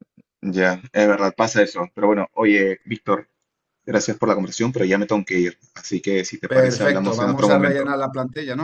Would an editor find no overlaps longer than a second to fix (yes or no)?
no